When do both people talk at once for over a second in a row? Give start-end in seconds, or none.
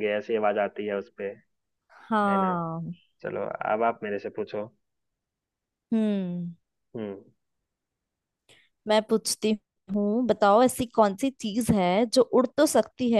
none